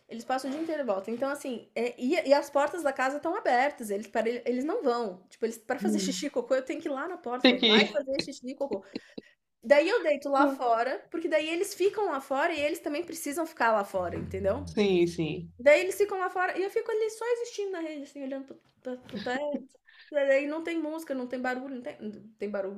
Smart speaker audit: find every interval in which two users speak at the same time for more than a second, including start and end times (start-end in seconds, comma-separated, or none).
none